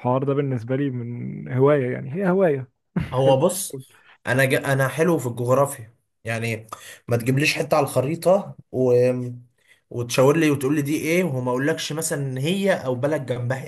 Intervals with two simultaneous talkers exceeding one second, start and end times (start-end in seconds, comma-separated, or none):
none